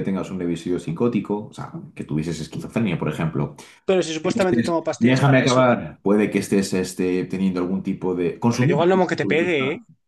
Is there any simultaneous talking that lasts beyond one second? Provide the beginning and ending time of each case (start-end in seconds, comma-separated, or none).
4.2-5.6